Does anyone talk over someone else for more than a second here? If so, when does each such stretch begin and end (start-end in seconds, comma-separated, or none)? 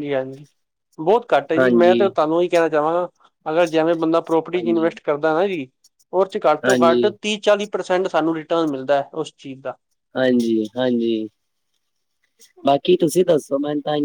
none